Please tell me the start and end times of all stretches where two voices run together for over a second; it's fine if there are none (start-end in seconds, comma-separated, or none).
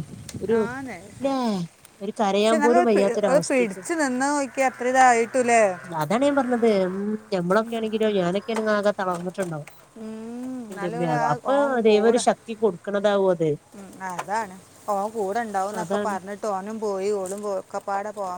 2.4-3.9